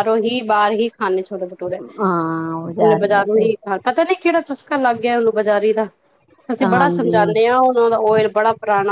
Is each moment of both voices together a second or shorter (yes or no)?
yes